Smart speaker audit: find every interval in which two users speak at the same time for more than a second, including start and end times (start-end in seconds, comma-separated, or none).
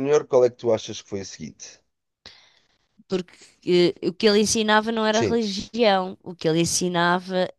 none